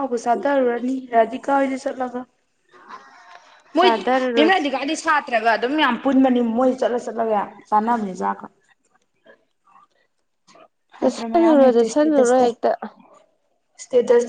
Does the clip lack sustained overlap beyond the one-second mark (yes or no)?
no